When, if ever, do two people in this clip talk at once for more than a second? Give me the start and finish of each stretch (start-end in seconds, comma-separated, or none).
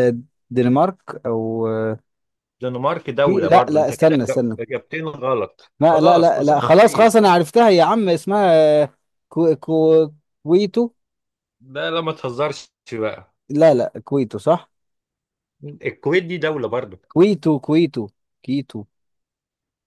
3.2-4.6, 5.8-7.2